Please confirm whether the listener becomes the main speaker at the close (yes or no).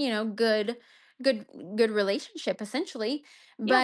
no